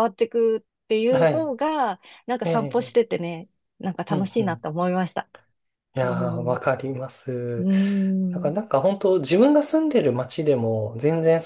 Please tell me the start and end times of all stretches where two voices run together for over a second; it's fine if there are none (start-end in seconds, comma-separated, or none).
none